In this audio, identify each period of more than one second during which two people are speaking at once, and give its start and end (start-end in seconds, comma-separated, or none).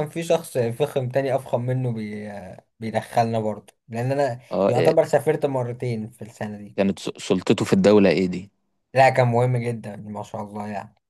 none